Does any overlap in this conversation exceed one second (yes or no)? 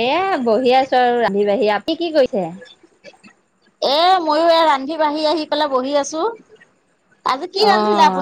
no